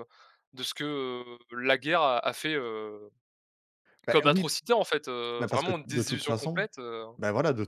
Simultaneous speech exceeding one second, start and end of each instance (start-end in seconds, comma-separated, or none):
5.4-6.6